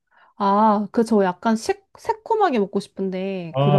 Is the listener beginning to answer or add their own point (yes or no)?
yes